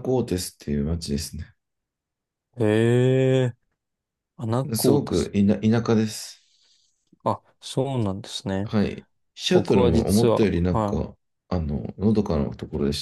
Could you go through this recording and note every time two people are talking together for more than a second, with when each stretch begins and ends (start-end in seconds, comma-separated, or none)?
9.5-11.1